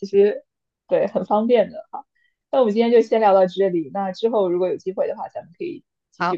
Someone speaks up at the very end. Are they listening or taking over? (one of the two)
taking over